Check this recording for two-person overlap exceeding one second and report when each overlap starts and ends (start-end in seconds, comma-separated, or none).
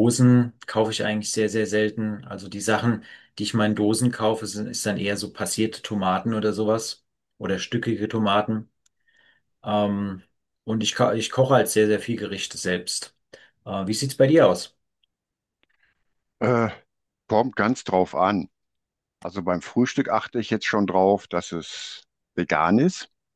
none